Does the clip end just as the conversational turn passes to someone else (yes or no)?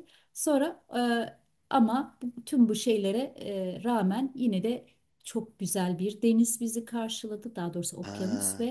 no